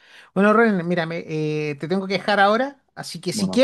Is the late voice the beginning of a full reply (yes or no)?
no